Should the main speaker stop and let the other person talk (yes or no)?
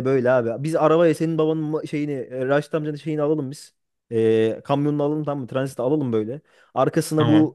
no